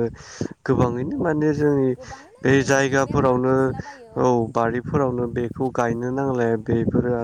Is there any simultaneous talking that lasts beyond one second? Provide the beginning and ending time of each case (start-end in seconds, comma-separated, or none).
2.5-4.1